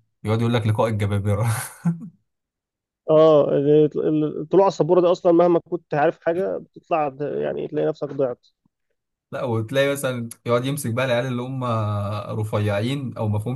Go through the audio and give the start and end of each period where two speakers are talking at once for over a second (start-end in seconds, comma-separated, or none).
none